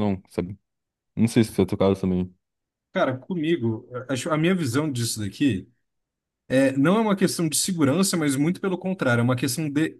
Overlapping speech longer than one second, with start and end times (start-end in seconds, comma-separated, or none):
none